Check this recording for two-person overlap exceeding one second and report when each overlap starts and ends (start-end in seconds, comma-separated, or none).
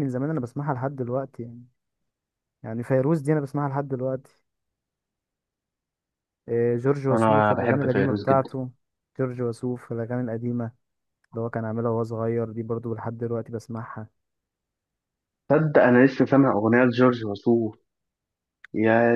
7.1-8.5